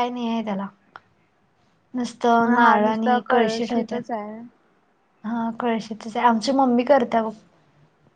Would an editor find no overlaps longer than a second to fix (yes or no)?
no